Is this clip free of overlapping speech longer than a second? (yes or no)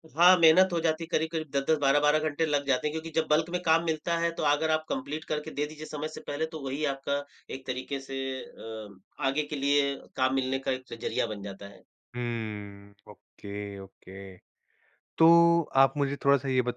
yes